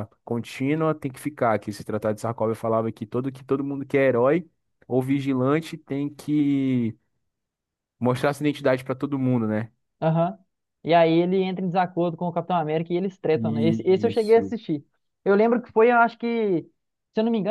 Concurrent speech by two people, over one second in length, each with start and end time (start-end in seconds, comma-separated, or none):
13.3-14.5